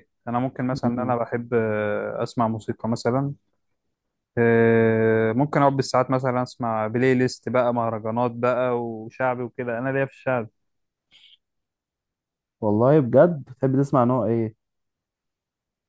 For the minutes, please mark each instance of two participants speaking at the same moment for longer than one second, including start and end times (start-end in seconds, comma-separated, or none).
none